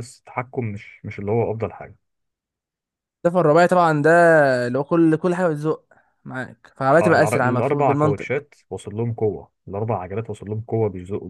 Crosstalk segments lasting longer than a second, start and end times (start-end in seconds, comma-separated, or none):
7.0-8.3